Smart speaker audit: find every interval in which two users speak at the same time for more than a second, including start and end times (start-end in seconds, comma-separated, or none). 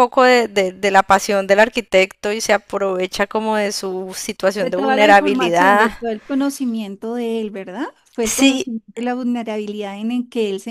4.6-5.9